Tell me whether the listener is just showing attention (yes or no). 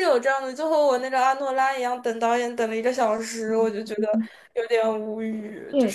no